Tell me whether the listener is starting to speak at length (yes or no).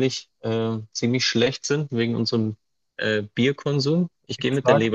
yes